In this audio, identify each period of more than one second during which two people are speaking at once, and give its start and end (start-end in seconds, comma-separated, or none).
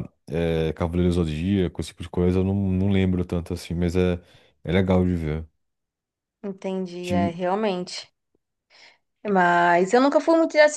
none